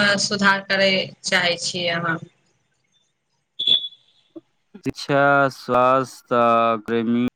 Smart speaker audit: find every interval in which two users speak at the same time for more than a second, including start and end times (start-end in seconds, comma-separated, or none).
none